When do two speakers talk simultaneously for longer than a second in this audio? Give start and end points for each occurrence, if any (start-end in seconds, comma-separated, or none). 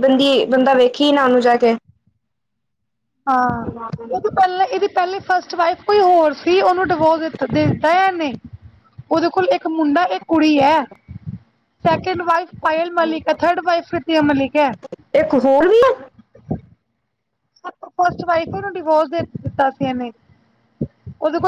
none